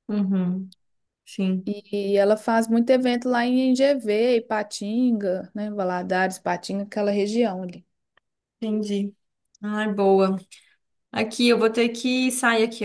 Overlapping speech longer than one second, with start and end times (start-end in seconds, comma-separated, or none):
none